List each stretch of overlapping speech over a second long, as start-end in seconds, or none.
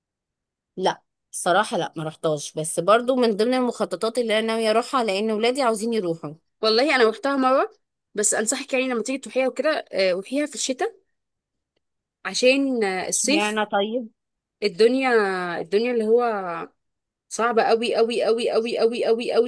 none